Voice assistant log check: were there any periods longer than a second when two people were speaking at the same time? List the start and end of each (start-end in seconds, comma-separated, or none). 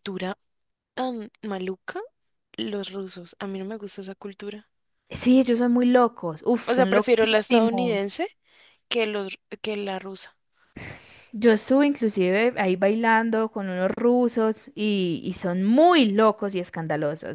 6.7-8.0